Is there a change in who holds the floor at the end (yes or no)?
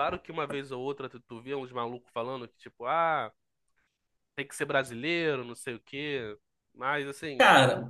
yes